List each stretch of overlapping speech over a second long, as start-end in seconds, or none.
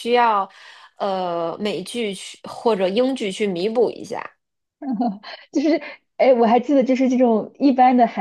none